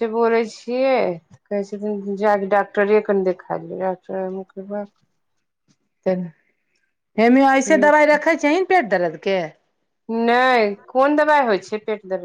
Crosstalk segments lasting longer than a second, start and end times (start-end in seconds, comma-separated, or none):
none